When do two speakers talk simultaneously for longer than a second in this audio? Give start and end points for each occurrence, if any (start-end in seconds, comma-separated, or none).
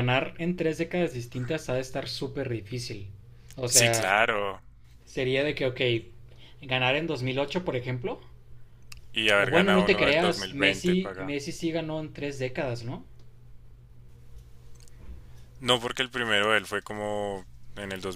9.3-11.3